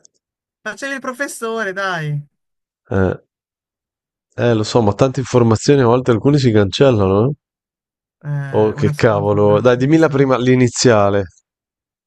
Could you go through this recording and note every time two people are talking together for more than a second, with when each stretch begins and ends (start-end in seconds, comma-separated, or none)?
8.5-10.3